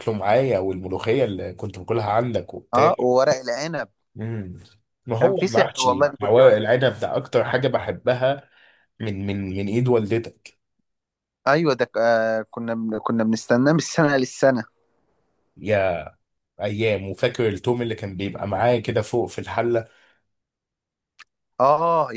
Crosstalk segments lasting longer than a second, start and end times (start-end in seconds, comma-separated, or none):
5.2-6.6